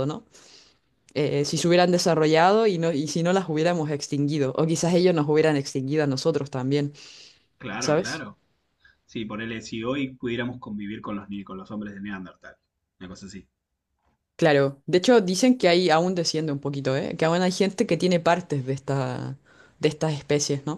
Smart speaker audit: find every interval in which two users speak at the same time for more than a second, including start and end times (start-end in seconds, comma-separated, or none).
none